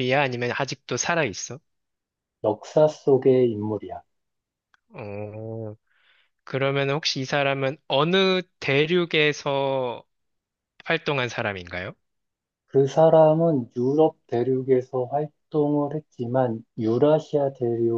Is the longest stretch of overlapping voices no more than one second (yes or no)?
yes